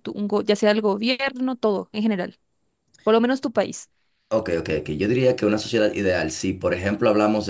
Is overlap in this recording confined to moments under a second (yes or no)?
yes